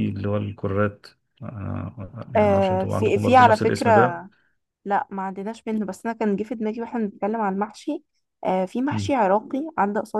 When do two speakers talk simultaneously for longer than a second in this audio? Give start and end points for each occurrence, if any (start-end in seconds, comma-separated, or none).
2.4-3.9